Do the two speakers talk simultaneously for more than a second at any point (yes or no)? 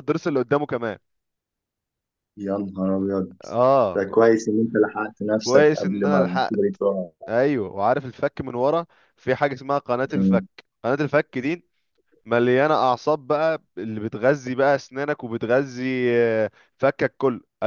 yes